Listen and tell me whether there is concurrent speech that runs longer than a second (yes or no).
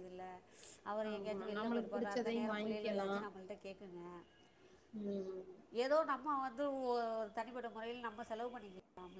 yes